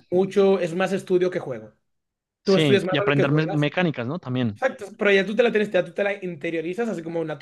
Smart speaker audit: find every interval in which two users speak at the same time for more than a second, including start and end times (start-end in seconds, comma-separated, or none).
2.5-3.7